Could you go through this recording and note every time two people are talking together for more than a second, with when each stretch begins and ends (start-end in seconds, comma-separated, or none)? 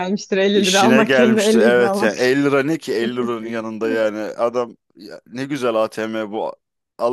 0.5-2.3